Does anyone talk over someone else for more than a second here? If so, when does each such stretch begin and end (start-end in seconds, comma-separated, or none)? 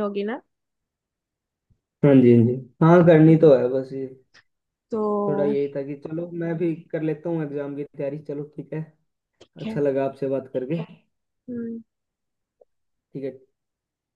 none